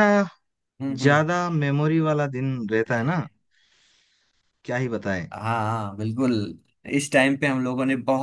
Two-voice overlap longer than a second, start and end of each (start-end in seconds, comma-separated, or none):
none